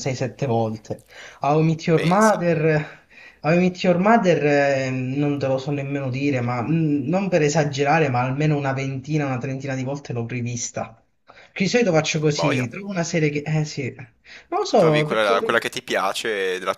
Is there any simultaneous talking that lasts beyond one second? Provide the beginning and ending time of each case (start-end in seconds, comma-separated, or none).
none